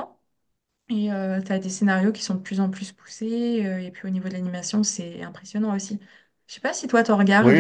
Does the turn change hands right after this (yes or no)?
yes